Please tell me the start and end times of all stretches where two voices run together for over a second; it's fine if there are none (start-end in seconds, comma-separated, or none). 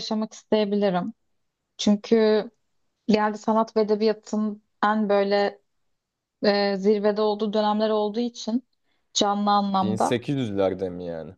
none